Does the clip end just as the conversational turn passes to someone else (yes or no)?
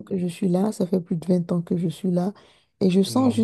no